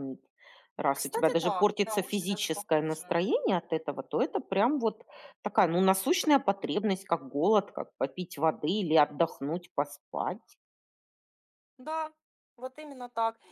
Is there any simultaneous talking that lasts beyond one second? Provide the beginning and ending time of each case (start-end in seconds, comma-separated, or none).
0.9-3.2